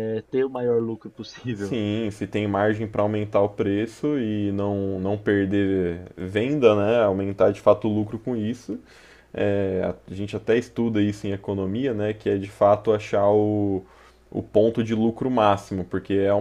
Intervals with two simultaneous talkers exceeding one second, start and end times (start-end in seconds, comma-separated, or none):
none